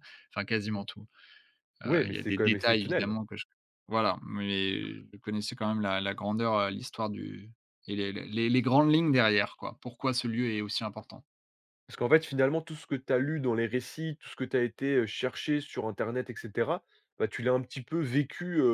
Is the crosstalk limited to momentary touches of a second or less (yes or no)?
no